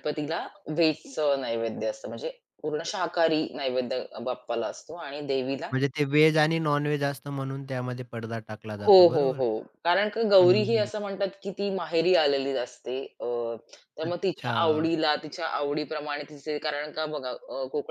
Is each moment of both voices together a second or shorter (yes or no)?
yes